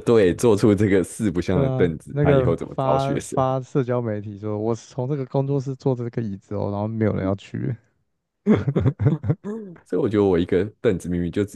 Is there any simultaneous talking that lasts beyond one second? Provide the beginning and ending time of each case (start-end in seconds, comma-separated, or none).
1.5-3.4